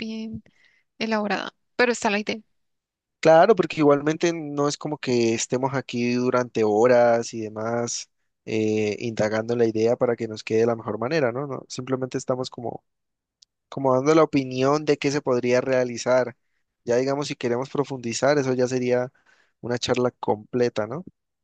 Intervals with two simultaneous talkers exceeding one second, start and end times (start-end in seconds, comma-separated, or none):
none